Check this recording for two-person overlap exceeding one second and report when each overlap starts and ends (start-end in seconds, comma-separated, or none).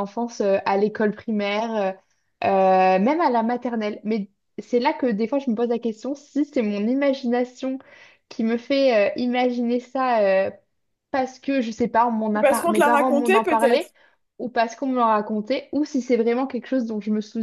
12.3-13.9